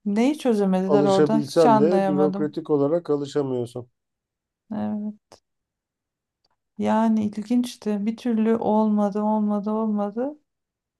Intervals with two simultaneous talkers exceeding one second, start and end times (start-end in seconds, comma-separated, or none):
0.8-2.6